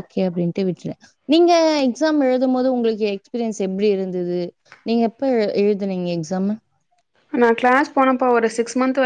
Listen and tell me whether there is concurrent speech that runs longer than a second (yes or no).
no